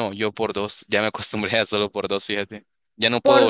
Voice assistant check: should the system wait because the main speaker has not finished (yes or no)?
yes